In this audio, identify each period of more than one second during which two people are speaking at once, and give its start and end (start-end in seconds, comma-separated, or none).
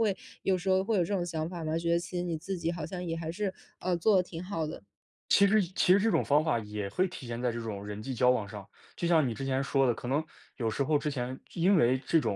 none